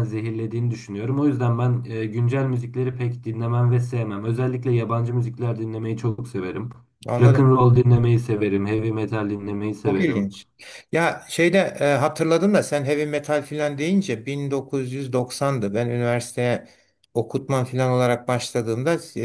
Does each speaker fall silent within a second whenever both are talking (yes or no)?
yes